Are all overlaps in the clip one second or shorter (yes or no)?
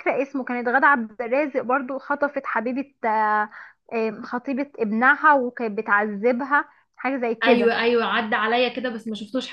yes